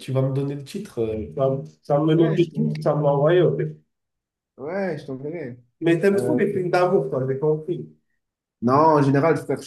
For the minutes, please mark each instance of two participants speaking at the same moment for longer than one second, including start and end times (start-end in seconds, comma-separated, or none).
none